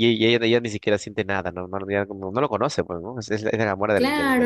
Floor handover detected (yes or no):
yes